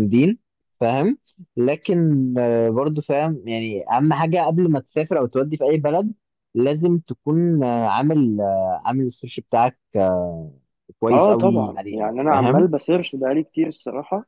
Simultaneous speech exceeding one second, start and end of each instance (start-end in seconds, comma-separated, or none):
11.1-12.7